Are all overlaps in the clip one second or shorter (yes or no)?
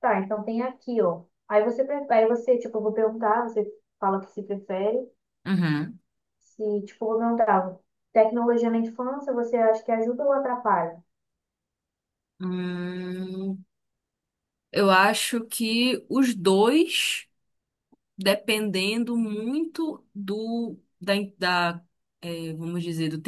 yes